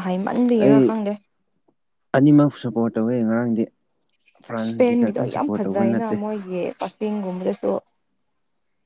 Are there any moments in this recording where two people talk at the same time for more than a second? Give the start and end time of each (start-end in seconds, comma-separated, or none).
4.6-6.2